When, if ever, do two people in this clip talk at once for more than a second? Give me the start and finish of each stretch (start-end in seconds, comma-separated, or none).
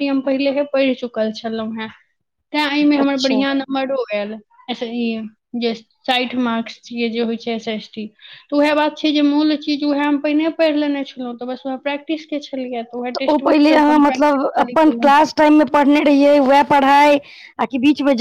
13.3-14.8